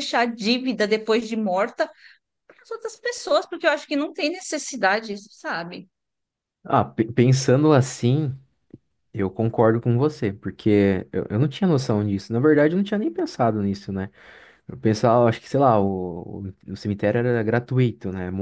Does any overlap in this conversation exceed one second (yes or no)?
no